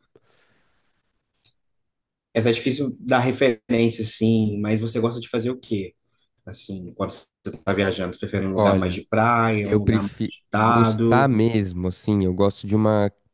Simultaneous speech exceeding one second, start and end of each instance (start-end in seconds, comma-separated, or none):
9.6-11.4